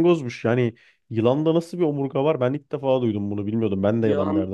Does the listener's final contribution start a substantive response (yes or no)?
yes